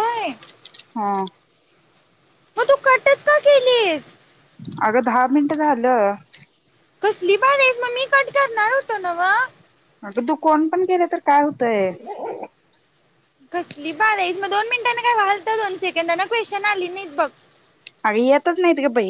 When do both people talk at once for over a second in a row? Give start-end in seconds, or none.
none